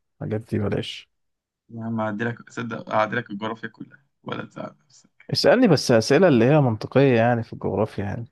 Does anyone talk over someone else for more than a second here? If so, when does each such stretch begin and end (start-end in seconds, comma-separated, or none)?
none